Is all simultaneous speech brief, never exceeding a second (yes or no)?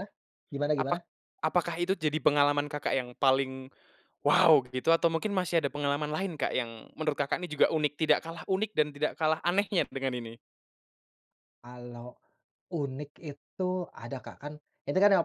yes